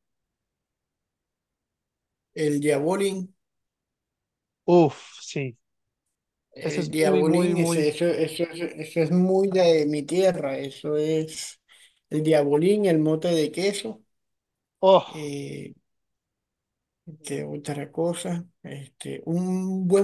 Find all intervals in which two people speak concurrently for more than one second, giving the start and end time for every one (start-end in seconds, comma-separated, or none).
6.6-8.0